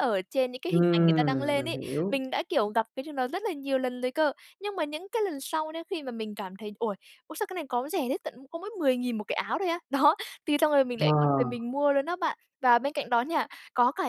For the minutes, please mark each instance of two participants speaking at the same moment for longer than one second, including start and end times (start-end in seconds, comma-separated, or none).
0.7-2.2